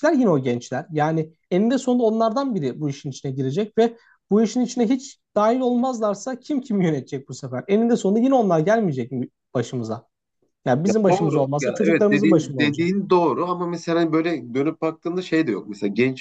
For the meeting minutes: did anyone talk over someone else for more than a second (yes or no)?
yes